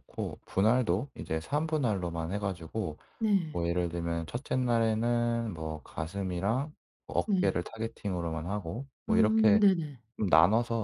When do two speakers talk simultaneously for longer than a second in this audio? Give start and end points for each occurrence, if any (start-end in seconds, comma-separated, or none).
none